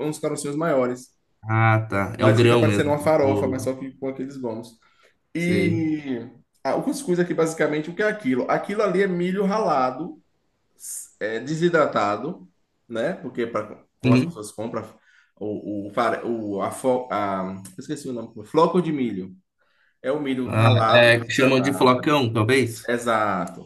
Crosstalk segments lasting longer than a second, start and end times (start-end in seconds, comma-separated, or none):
2.2-3.7, 20.4-22.0